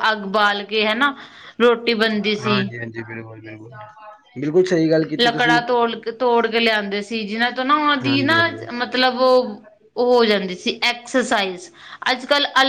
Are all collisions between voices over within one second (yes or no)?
yes